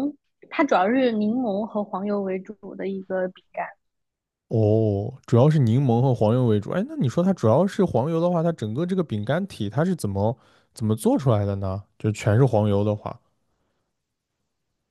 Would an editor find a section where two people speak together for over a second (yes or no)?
no